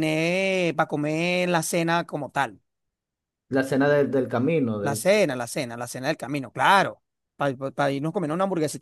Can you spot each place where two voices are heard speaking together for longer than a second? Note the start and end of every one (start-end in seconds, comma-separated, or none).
none